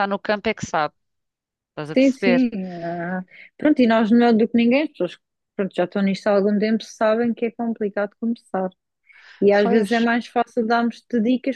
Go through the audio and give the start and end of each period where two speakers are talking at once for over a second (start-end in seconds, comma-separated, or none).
none